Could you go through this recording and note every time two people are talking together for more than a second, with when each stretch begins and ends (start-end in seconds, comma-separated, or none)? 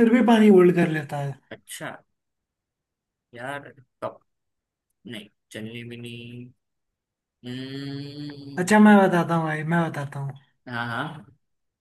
none